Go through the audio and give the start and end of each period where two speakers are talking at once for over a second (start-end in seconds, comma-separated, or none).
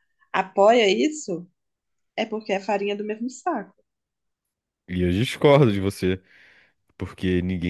none